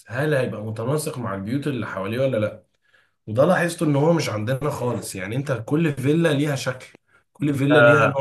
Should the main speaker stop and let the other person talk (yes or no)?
no